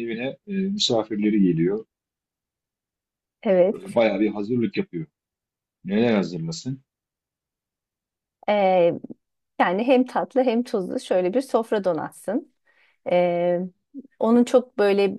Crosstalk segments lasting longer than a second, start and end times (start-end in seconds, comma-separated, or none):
none